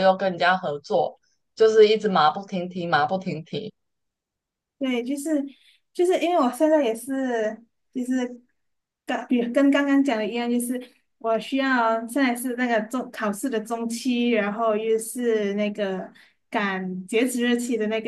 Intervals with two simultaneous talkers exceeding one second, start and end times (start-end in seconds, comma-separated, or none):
none